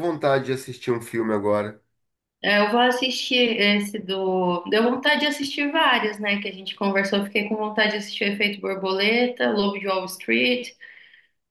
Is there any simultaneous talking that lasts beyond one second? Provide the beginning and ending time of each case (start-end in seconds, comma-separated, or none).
none